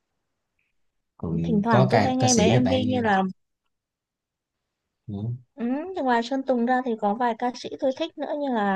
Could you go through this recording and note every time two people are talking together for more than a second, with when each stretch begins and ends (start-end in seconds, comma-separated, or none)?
1.4-3.0